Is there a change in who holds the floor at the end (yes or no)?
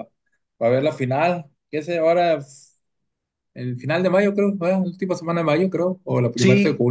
yes